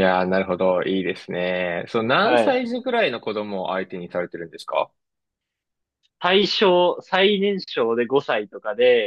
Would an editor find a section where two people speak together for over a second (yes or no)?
no